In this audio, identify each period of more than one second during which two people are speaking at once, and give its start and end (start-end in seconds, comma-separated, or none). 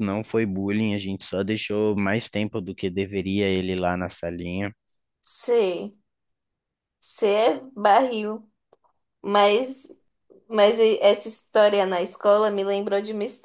none